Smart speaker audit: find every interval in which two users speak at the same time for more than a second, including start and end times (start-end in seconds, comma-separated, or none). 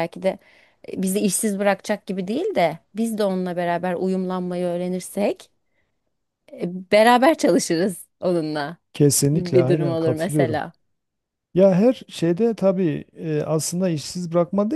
9.3-10.6